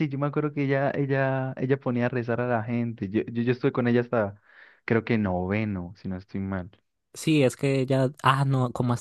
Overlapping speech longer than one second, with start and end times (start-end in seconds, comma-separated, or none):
none